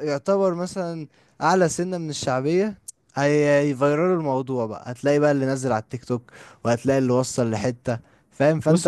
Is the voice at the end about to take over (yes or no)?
no